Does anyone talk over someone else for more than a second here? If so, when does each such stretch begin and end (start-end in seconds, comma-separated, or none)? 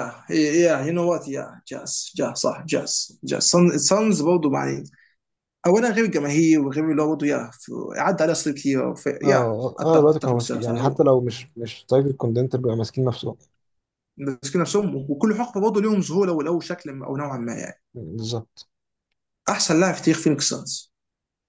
9.2-11.0